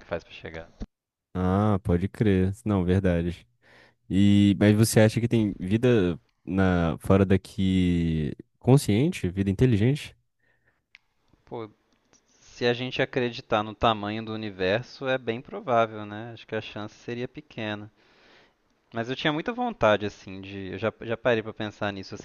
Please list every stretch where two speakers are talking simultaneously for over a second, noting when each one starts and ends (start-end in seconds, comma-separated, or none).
none